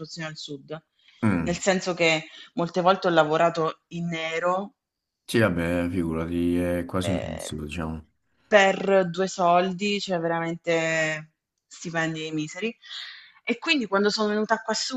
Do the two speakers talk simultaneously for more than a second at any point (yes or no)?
no